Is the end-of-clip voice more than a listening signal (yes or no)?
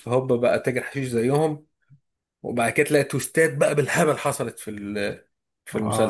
yes